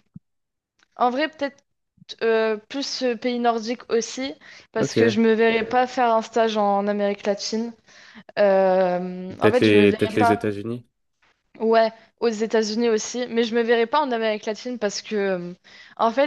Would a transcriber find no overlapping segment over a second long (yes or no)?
no